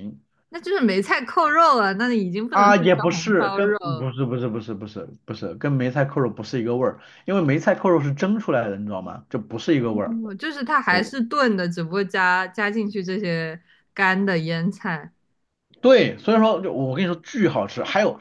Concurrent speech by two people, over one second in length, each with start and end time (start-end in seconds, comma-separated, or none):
2.5-4.1